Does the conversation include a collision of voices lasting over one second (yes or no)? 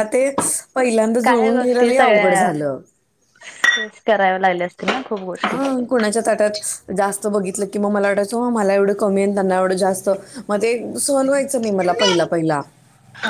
no